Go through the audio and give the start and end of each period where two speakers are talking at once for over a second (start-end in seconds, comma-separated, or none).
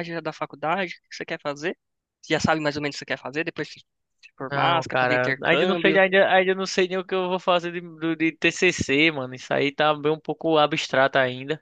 4.5-6.0